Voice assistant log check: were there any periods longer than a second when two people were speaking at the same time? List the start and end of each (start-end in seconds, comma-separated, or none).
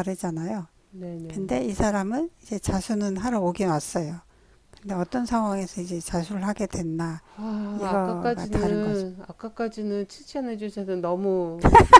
7.7-9.1